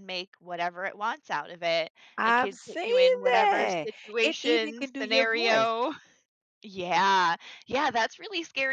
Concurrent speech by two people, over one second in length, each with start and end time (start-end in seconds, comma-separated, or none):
2.2-5.7